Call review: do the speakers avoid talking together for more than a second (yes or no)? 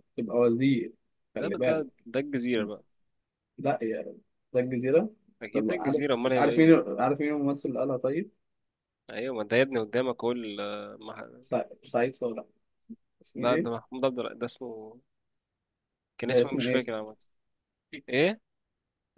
no